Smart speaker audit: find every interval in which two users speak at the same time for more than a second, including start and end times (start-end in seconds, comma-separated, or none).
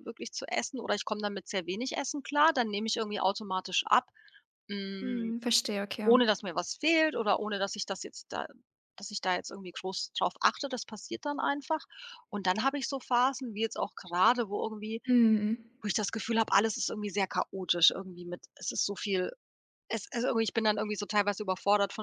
none